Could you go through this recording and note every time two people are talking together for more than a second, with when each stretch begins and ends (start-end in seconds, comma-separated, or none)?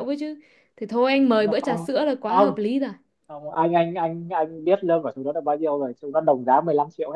1.3-2.6